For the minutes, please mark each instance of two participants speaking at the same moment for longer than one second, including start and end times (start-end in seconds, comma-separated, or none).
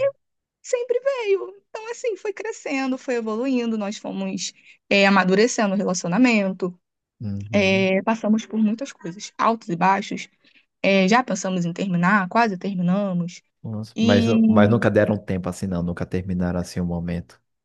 none